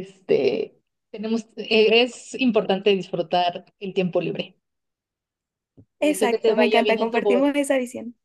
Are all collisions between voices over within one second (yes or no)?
no